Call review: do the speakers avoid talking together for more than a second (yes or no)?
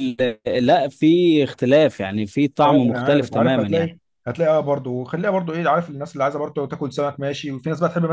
no